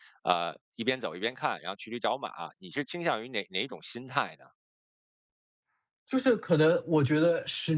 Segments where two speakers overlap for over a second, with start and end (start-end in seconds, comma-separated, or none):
none